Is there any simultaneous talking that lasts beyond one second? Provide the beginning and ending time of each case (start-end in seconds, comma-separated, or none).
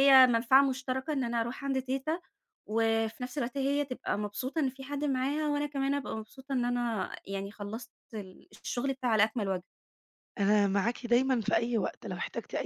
none